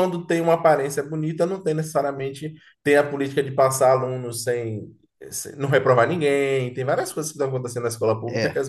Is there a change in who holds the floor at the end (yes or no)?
no